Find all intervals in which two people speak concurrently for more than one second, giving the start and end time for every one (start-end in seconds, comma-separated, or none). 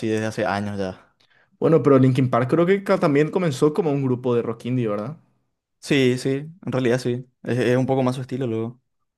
none